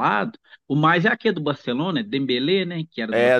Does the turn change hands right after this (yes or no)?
yes